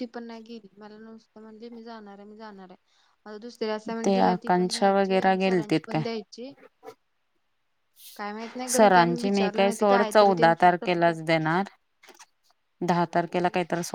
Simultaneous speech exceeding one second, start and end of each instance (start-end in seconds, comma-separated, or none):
4.0-6.0, 8.7-10.9